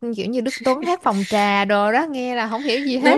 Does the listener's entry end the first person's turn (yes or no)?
yes